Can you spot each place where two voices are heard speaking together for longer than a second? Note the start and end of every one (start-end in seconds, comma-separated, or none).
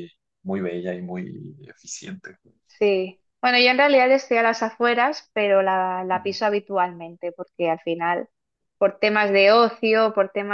none